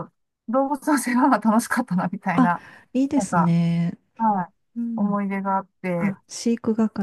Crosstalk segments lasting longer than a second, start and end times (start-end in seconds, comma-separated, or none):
none